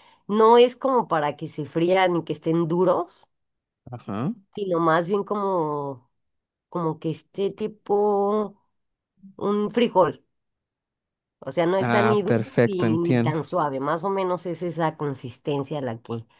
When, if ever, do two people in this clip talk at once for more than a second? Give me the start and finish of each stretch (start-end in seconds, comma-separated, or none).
11.8-13.4